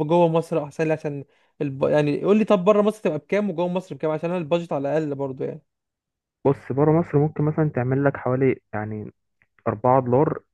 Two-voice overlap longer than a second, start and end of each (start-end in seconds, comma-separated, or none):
none